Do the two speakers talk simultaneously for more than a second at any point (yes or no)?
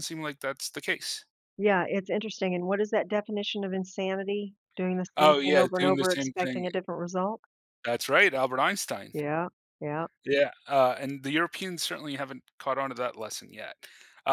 yes